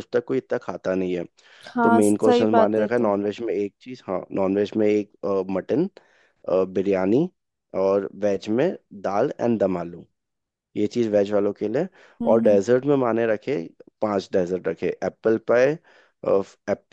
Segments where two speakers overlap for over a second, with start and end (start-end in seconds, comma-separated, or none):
1.8-3.1